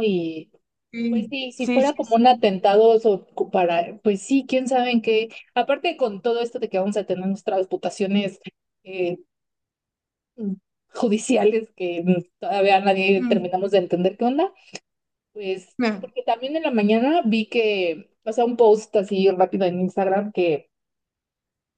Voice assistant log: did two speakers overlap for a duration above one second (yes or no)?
yes